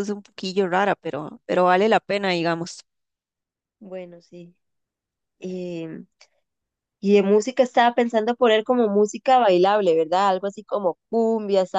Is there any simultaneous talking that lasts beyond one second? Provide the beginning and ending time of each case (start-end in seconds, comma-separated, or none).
none